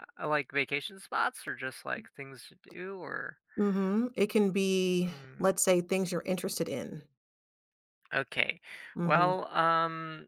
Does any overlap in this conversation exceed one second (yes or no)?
no